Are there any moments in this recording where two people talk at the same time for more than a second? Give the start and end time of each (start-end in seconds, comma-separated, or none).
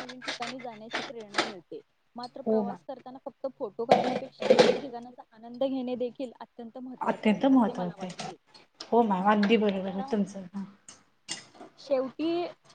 7.1-8.3